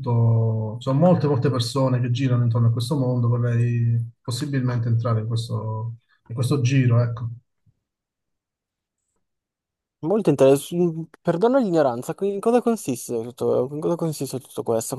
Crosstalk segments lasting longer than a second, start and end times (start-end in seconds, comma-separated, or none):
none